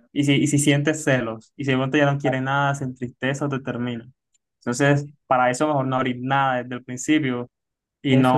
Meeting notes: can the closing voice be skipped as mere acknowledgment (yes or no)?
yes